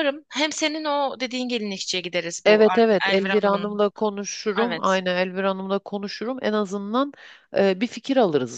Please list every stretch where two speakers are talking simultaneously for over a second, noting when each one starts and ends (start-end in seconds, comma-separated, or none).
2.4-3.8